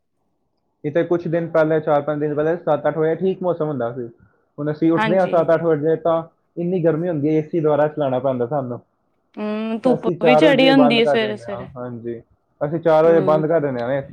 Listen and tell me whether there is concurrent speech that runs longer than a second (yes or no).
yes